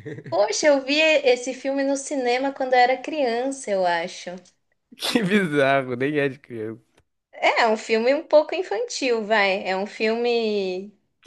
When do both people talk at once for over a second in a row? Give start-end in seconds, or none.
none